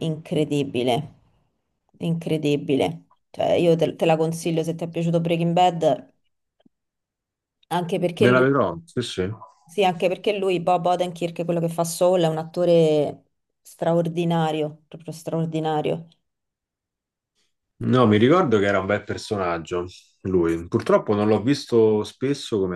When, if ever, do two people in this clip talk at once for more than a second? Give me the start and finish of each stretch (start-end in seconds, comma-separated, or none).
none